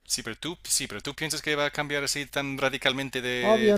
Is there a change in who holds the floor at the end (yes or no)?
yes